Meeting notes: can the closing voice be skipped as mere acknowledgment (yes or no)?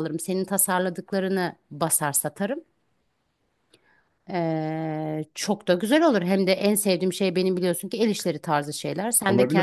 no